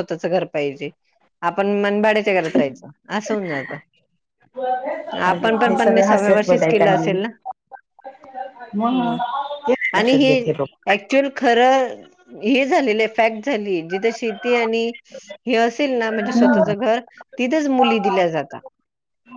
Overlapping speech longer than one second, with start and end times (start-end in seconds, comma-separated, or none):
5.2-7.2